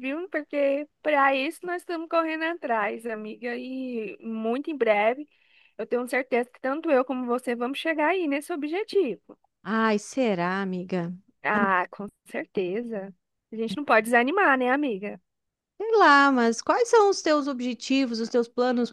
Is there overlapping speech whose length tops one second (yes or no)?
no